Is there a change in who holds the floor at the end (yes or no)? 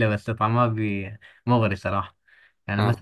no